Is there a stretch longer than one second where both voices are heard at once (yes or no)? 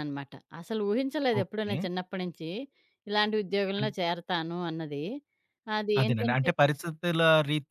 no